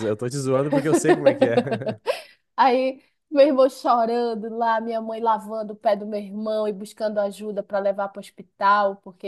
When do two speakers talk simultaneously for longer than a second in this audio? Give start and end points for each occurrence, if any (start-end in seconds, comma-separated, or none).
none